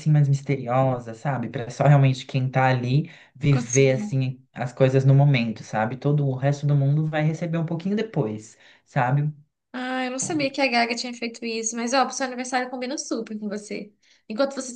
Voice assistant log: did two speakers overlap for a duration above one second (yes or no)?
no